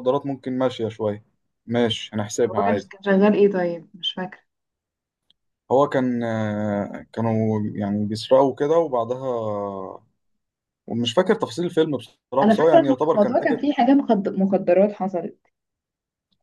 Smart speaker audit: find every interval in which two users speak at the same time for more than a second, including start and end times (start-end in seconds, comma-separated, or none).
12.4-13.6